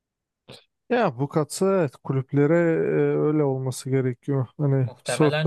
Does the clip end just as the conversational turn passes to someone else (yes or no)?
yes